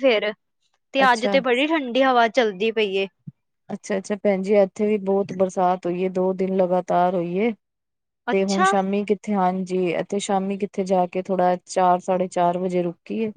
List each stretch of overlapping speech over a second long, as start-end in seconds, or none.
none